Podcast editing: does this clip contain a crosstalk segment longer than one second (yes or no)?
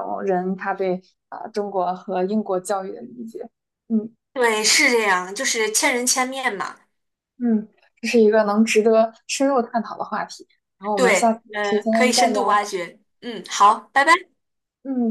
yes